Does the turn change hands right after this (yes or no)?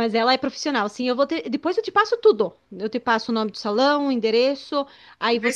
yes